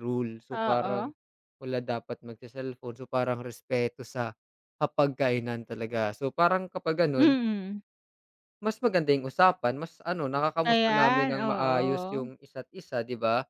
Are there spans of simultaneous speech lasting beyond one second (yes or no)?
yes